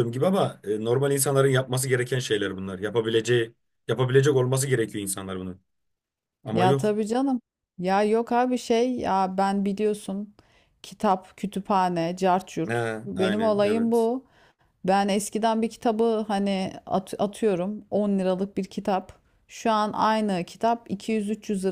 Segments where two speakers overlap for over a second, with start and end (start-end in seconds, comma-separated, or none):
12.7-14.1